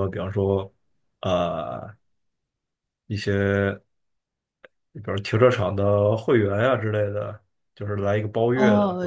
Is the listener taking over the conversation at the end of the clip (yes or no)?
yes